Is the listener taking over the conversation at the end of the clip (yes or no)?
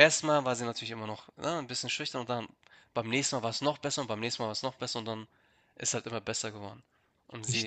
no